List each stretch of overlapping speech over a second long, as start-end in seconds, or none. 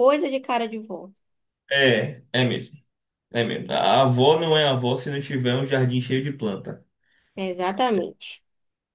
none